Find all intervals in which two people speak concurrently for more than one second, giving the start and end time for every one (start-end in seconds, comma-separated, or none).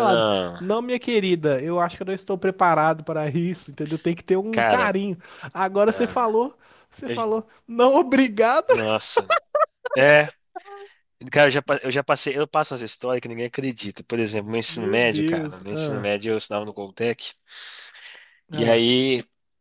14.7-16.1